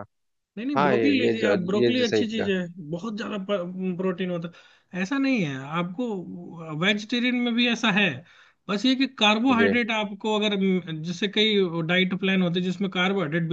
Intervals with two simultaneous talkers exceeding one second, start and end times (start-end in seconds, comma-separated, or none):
0.8-2.5